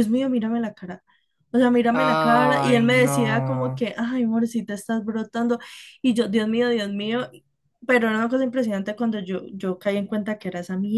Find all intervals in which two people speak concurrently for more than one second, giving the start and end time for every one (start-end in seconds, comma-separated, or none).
1.9-3.8